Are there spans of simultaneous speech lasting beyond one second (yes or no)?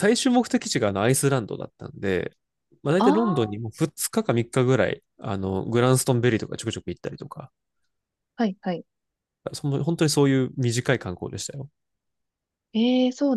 no